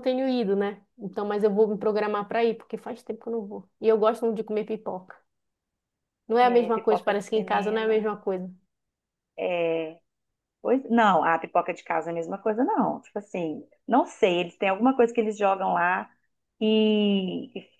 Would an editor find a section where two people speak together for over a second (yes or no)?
yes